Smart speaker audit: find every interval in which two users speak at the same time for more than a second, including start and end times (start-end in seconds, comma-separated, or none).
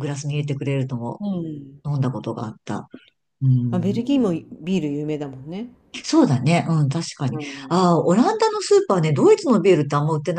none